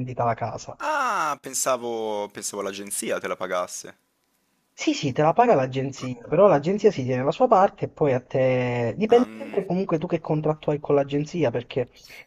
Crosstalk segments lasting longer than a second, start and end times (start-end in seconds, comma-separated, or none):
none